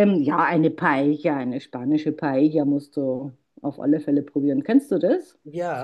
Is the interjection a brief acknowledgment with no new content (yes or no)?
no